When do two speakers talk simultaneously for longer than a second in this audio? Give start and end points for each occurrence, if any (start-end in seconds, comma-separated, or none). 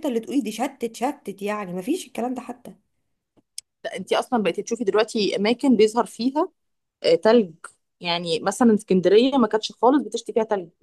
none